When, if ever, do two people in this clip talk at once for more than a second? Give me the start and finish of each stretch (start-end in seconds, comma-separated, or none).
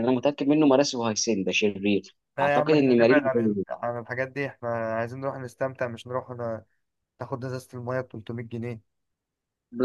2.4-3.6